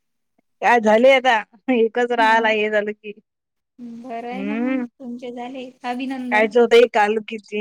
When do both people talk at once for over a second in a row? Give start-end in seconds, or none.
none